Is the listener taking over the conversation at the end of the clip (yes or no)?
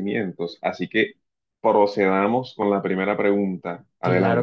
yes